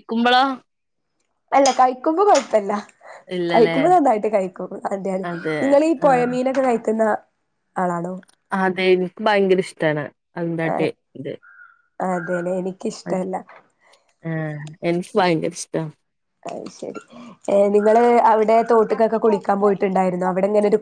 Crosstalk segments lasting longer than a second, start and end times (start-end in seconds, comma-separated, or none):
none